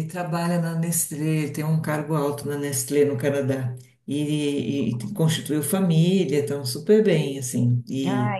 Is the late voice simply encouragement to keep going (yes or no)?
yes